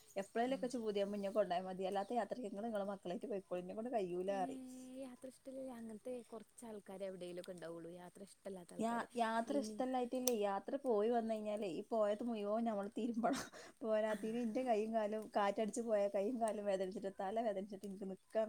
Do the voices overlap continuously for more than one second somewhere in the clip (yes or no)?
no